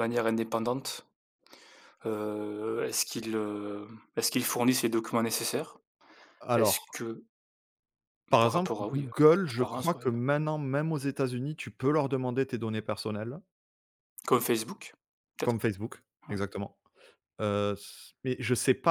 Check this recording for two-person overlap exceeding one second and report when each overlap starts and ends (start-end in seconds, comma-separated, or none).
8.4-10.1